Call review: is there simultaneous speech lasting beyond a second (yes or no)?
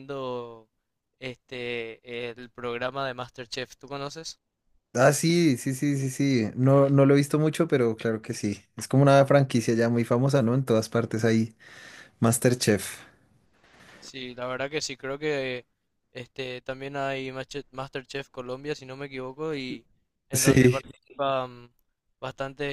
no